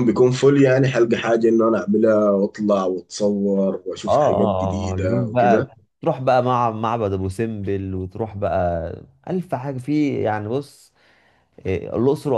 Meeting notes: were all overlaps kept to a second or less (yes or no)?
no